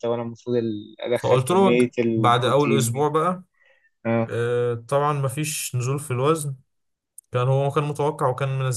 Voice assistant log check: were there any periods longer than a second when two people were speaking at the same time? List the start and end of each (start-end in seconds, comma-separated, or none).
1.1-3.1